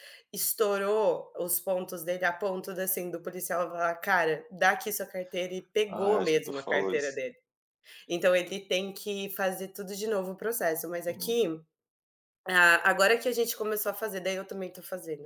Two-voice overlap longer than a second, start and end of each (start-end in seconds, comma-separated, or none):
5.9-7.2